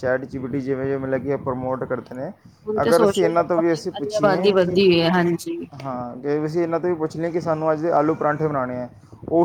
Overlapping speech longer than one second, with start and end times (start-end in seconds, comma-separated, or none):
2.8-4.8